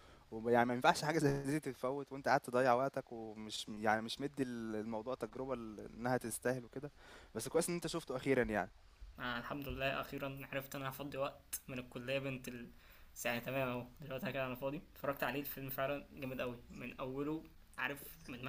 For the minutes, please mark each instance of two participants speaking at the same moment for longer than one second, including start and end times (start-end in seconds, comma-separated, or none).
none